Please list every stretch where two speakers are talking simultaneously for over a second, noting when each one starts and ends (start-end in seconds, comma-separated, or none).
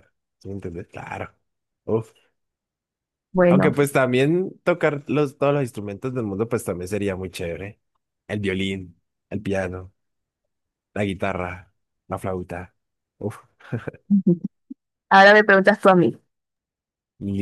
none